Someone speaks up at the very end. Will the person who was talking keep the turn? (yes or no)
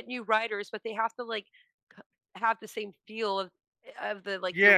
no